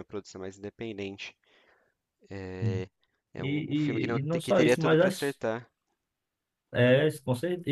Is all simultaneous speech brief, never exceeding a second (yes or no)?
no